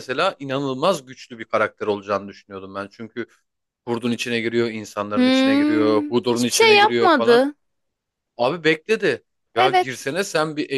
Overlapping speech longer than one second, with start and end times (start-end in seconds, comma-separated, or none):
5.2-7.4